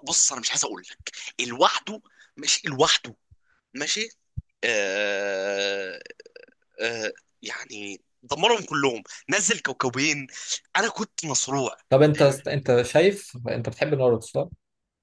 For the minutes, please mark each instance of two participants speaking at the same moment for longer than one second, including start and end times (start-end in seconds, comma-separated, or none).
none